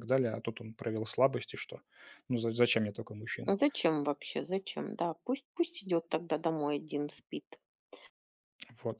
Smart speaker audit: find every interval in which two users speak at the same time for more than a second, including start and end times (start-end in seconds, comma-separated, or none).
none